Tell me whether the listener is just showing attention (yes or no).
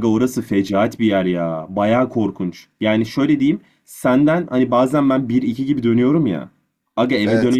yes